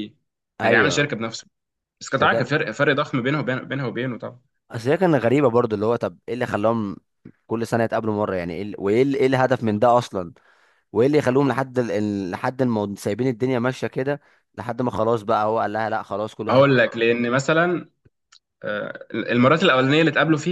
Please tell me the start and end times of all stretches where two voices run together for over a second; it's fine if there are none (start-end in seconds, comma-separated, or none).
none